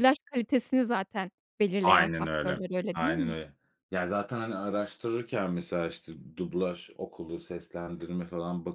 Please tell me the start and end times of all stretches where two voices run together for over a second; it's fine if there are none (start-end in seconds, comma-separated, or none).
1.8-3.4